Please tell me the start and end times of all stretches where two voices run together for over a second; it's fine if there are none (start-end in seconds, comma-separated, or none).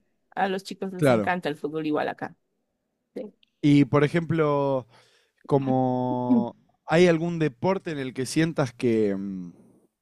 none